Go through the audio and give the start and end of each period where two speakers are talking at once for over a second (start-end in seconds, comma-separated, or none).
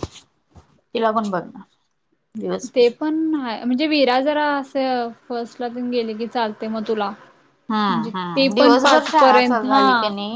7.9-9.8